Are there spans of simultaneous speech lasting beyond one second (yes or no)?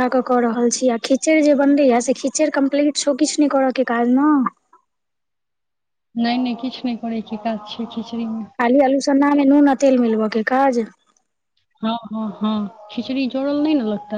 no